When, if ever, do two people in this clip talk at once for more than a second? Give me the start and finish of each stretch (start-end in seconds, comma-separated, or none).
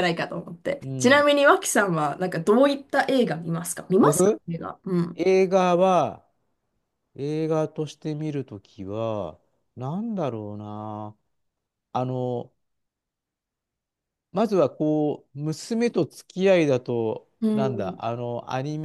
none